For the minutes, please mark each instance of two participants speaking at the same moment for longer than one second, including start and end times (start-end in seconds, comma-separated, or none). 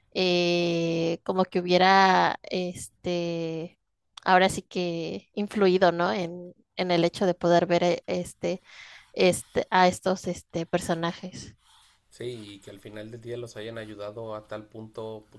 none